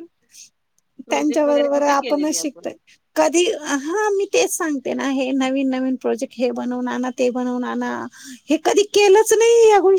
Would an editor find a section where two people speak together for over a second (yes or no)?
yes